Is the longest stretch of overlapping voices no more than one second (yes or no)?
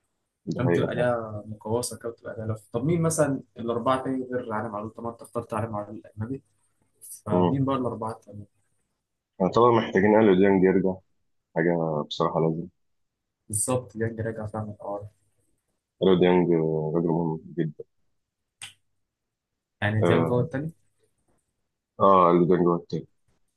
yes